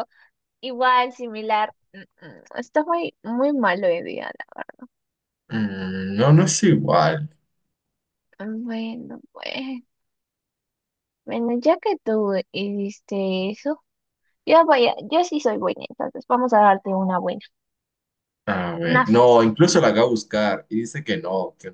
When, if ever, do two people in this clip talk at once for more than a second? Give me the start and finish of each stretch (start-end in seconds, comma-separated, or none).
none